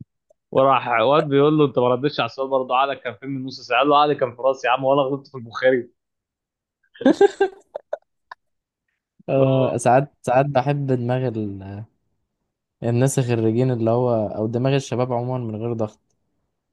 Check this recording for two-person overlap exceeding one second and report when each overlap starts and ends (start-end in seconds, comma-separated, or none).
none